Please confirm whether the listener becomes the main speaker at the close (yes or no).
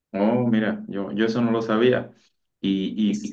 no